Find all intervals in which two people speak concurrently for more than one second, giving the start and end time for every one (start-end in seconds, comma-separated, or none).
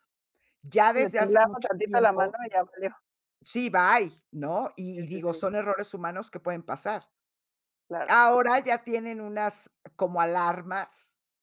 0.9-2.4